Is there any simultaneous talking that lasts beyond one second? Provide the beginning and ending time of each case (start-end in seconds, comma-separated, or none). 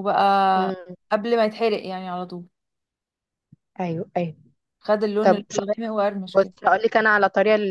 none